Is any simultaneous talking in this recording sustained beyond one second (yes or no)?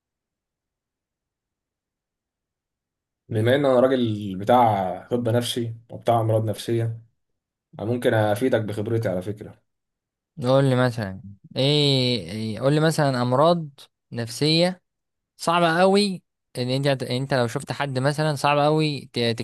no